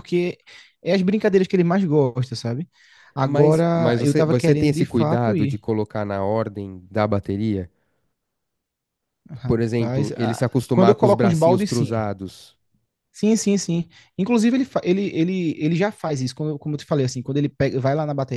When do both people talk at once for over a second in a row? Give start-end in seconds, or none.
3.2-5.6, 9.5-12.1